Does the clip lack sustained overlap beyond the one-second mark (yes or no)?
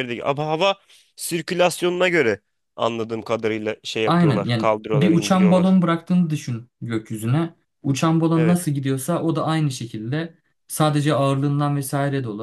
no